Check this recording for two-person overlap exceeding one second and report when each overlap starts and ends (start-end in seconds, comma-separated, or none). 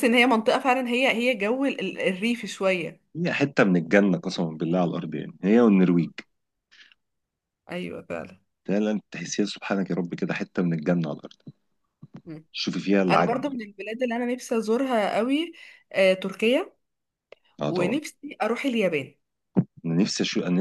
none